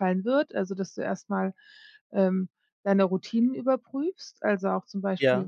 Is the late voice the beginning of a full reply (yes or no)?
no